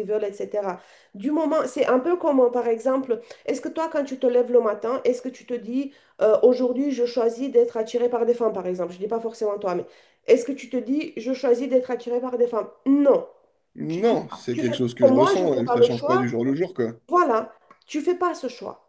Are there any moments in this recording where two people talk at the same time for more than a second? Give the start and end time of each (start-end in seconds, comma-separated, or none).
14.5-16.3